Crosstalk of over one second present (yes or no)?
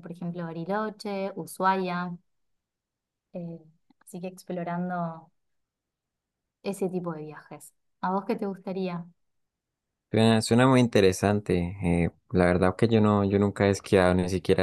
no